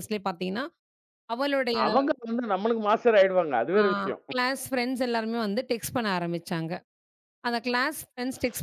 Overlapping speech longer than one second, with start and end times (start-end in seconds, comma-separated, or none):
none